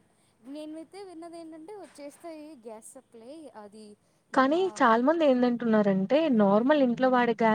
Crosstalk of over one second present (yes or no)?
no